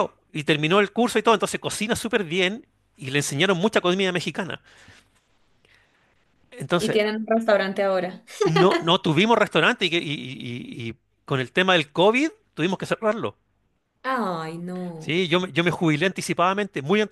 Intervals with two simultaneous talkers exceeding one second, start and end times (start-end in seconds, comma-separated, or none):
none